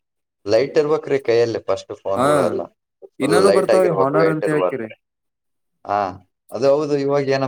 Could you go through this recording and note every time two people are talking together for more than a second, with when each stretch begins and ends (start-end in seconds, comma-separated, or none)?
3.2-4.9